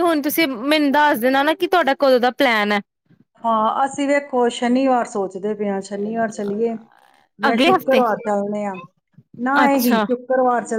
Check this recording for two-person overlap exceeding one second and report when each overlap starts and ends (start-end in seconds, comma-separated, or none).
none